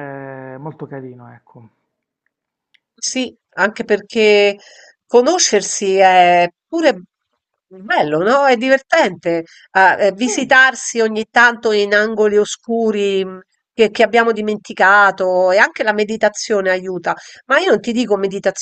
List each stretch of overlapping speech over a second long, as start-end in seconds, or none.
none